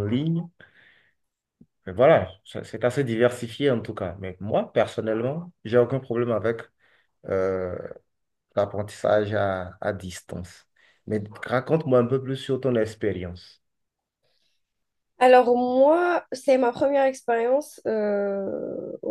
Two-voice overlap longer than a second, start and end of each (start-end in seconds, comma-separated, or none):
none